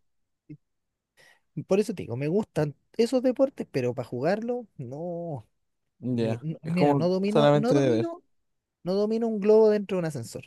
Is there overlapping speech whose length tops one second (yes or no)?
yes